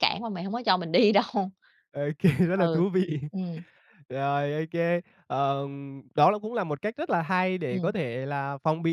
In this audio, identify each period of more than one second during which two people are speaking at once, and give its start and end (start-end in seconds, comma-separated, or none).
none